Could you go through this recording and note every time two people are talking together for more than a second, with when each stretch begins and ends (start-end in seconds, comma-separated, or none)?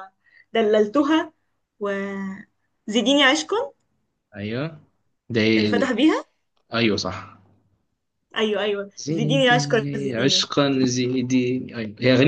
9.0-10.5